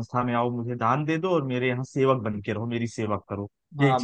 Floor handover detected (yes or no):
yes